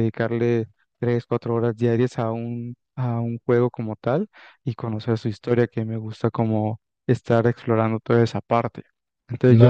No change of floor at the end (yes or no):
no